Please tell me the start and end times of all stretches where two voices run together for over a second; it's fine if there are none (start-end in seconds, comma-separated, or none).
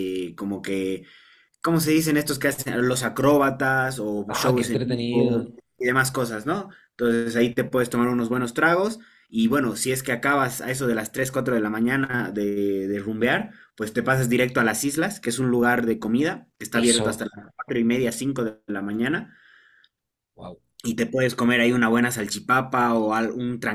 4.3-5.5